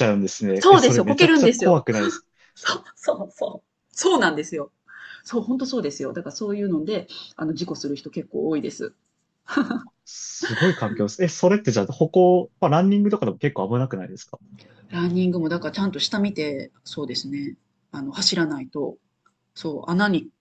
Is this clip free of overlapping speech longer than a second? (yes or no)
no